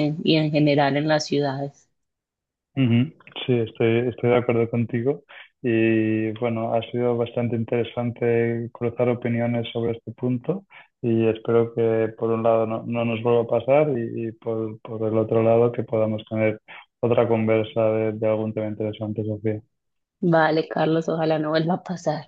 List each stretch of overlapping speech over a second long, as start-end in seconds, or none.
none